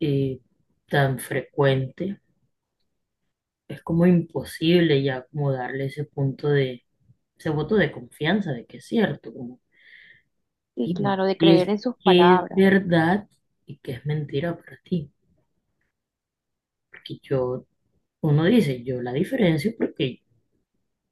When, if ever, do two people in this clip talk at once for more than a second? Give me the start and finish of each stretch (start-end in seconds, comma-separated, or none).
10.8-12.7